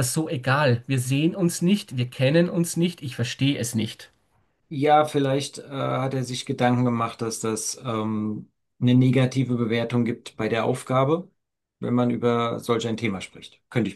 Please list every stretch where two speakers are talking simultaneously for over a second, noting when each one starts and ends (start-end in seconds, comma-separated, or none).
none